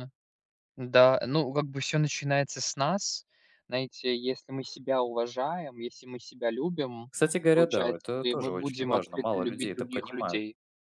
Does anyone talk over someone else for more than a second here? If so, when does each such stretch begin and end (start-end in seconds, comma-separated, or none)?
7.5-10.4